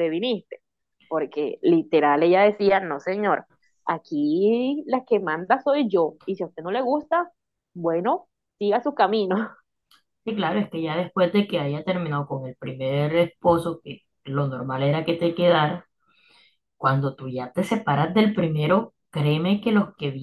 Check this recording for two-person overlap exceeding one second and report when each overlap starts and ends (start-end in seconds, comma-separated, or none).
none